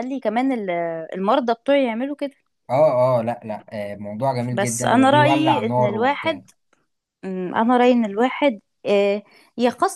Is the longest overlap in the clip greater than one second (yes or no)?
yes